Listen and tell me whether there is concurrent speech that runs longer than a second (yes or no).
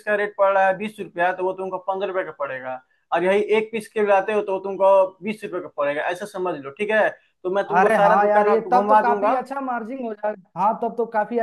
yes